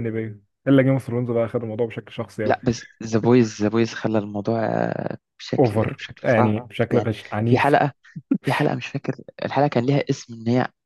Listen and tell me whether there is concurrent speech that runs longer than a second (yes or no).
yes